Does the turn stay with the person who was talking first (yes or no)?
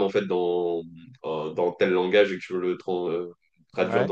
yes